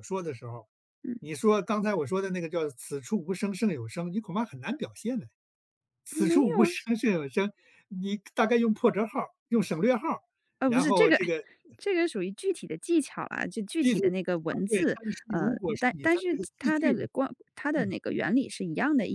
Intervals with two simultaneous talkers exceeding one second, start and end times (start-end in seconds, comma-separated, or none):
14.7-17.1